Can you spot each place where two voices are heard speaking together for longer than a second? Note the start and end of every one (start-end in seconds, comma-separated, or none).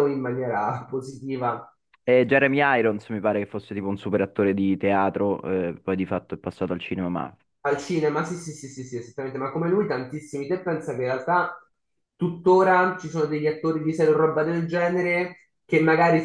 none